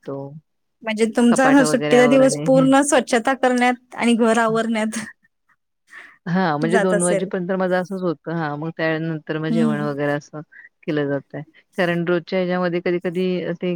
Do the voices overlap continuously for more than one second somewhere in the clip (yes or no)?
yes